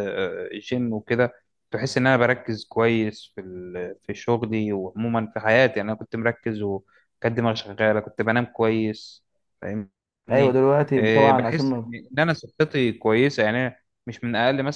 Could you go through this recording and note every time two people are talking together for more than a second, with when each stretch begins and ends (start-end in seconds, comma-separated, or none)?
10.3-11.9